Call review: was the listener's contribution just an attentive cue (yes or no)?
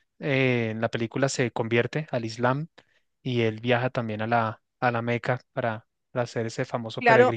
no